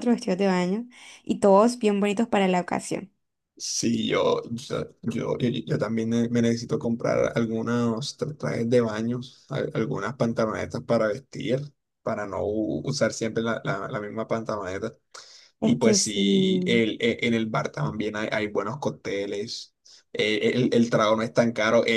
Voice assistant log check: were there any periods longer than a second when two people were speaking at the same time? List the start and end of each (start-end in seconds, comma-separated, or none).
15.6-16.8